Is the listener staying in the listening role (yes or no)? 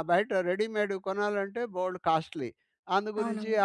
yes